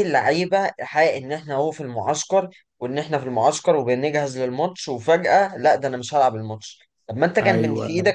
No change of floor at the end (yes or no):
yes